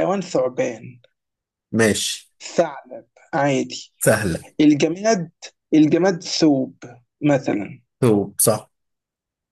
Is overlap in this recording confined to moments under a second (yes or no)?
yes